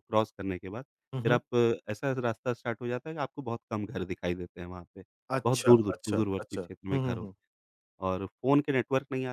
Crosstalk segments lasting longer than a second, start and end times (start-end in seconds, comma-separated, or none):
5.4-7.3